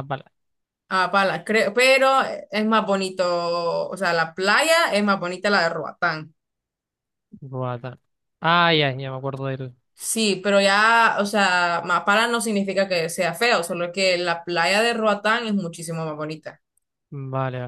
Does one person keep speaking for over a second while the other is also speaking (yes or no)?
no